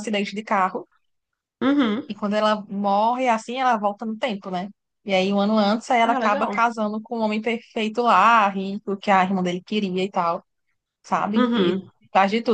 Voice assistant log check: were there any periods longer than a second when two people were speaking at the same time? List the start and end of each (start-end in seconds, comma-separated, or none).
none